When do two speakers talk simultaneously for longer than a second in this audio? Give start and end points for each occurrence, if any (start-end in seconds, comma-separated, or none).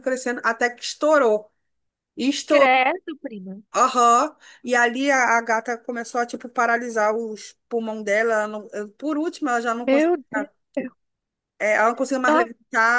none